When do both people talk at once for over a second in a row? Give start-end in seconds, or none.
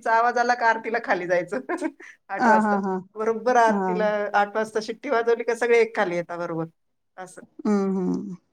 none